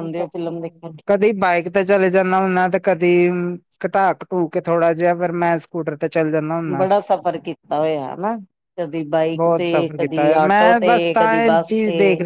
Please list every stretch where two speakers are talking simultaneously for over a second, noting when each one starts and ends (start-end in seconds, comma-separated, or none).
9.3-11.7